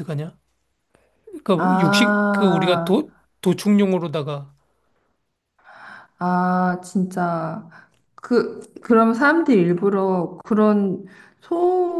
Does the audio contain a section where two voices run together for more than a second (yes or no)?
yes